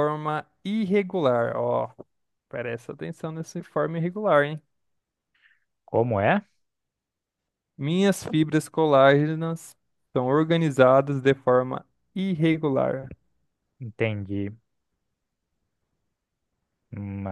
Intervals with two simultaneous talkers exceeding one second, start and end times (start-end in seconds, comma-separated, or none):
none